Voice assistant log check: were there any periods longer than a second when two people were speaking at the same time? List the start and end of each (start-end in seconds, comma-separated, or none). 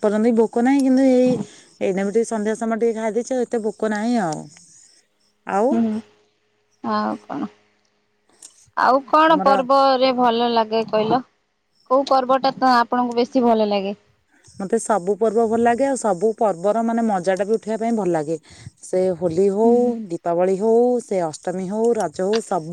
none